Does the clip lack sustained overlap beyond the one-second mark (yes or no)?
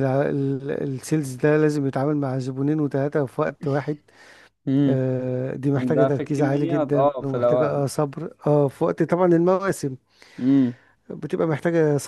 no